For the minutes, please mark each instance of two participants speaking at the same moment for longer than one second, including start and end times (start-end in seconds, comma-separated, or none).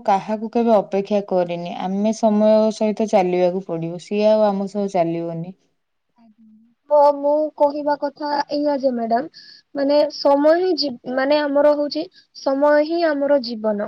none